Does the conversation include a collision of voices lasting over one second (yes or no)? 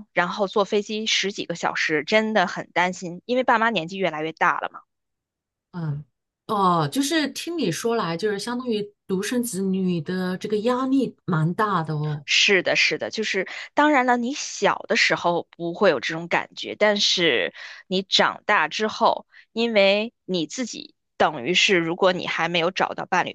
no